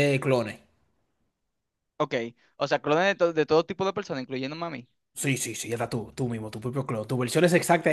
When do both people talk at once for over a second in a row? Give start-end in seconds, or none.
none